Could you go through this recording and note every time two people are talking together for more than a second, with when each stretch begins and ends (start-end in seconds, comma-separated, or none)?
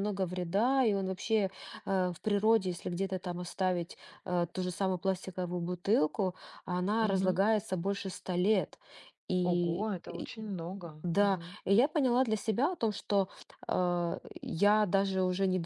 none